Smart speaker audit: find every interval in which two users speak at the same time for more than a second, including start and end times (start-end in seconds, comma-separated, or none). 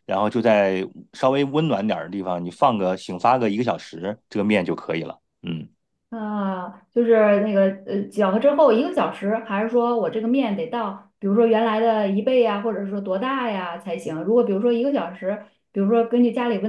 none